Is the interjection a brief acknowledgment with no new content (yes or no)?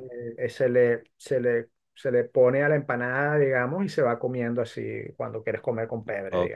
no